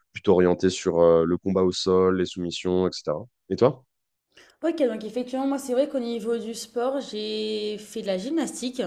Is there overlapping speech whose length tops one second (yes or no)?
no